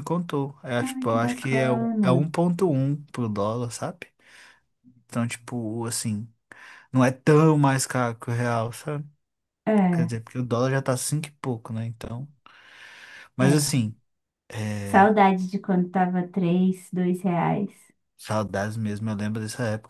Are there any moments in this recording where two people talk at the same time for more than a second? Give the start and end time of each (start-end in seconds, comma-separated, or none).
0.8-2.3